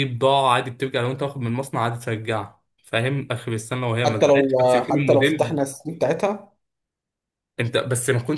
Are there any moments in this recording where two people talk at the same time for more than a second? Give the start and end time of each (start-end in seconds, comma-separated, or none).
4.0-5.6